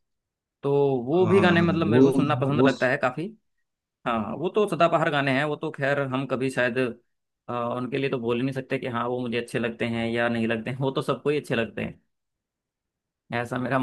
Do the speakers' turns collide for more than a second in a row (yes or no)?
yes